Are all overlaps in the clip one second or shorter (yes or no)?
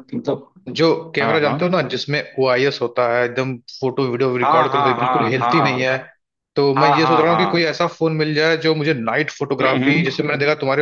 no